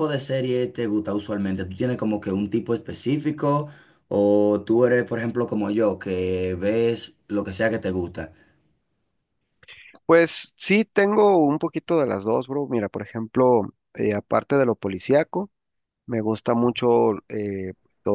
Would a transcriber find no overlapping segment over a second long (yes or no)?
yes